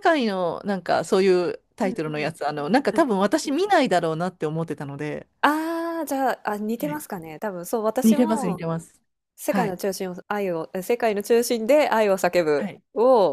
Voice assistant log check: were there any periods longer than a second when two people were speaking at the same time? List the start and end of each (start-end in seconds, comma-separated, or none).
none